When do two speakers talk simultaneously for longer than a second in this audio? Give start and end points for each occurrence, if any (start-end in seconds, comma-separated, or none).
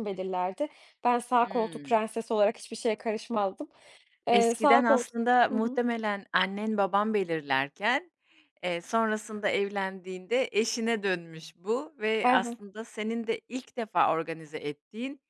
4.3-5.8